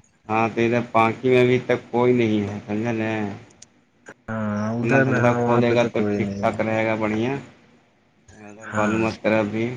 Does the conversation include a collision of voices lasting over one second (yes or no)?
yes